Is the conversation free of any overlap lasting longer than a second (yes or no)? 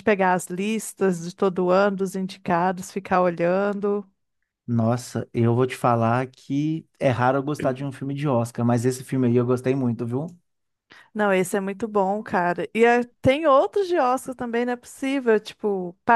yes